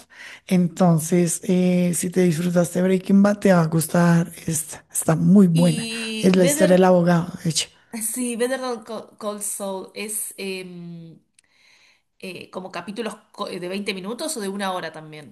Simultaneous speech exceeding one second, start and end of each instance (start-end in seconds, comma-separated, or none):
5.5-6.9